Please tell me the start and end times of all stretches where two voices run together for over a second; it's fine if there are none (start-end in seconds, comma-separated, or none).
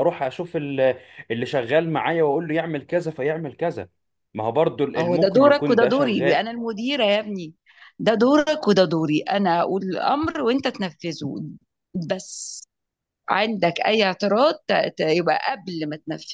5.0-6.4